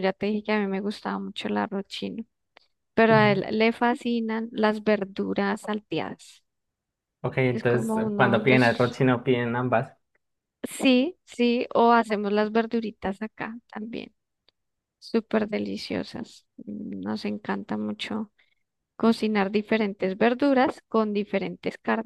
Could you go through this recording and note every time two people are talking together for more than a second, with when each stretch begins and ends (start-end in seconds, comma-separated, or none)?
7.5-8.9